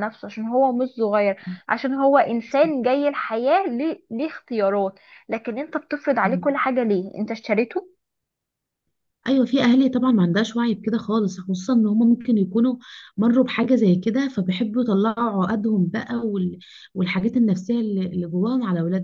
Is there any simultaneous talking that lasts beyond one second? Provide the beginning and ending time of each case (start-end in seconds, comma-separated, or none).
none